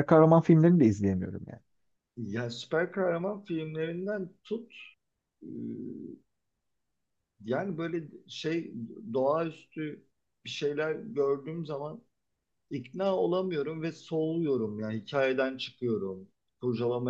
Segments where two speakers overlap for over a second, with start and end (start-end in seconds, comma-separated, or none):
none